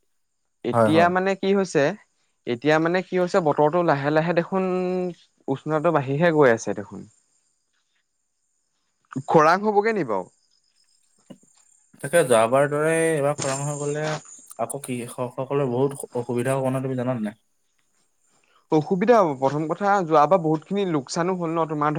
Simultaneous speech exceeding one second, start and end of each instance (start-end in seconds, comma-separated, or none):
none